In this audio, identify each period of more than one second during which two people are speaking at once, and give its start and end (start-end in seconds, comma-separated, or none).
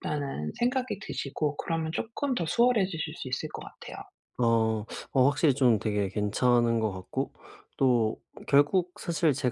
none